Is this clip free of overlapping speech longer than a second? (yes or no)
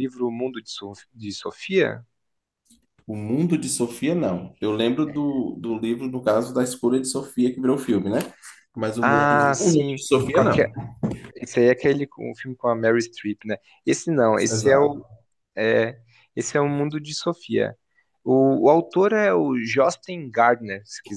no